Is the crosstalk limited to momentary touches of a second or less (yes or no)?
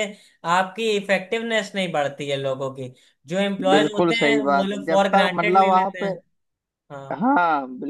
no